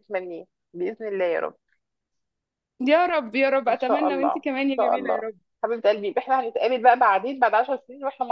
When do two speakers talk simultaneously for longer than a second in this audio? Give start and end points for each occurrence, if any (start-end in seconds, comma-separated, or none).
3.7-5.2